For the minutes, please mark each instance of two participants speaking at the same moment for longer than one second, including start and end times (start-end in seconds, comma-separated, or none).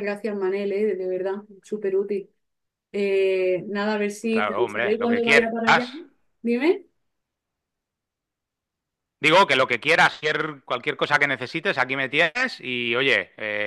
4.3-5.5